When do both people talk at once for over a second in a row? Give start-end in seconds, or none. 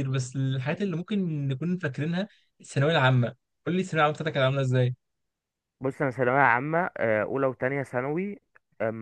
none